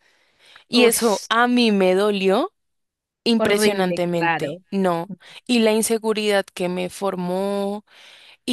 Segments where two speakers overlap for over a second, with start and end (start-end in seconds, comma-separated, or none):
3.4-4.6